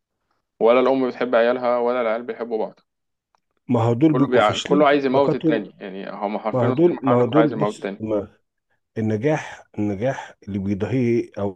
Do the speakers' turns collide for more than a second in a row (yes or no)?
yes